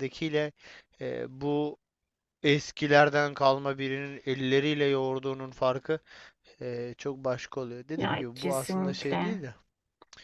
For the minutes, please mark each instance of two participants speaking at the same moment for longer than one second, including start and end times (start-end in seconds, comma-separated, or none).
8.0-9.5